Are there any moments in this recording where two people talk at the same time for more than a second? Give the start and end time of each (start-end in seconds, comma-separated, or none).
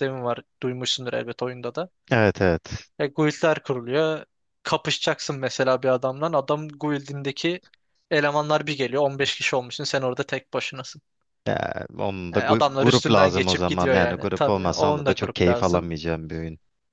12.3-15.9